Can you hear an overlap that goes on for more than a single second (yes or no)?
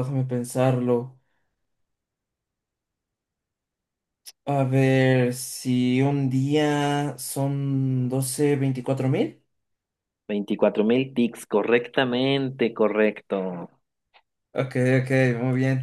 no